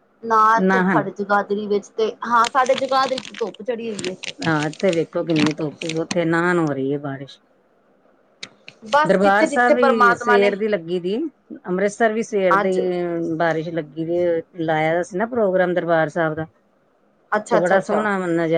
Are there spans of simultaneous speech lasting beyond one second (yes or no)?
yes